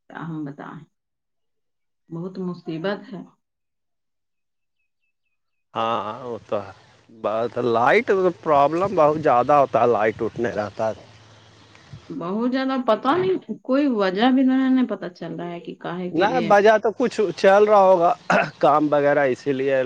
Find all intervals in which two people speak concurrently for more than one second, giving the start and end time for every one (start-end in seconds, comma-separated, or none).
none